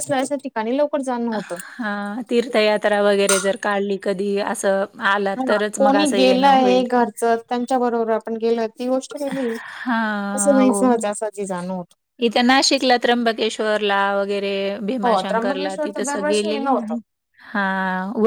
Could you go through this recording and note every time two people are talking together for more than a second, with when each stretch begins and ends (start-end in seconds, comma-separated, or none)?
15.0-17.0